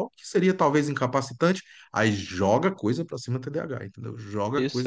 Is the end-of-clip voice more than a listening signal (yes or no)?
yes